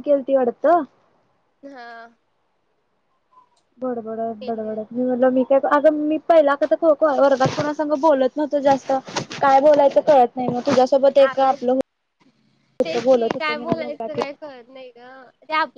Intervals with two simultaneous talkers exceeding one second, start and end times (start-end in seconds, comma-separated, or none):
12.7-14.2